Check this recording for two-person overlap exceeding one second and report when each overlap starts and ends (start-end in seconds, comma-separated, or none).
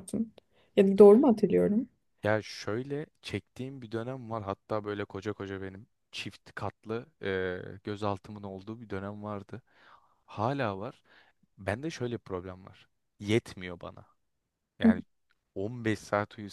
none